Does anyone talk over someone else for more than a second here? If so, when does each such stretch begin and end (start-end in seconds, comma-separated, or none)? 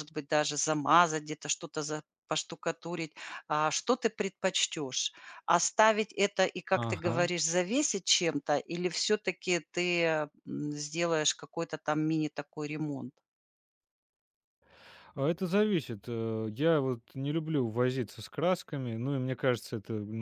none